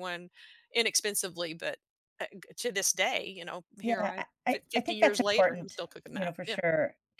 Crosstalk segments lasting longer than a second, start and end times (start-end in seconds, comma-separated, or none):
3.8-6.6